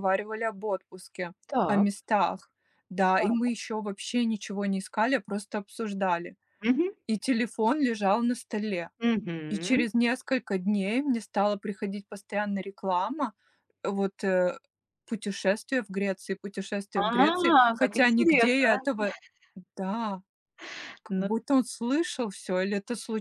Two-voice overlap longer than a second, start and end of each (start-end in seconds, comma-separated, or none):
16.9-18.8